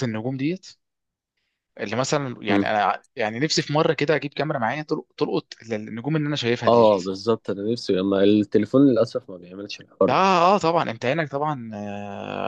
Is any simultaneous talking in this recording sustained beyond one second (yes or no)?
no